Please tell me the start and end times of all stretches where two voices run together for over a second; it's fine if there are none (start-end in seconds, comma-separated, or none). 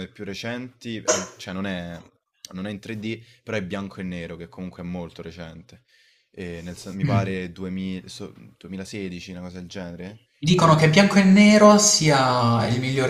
none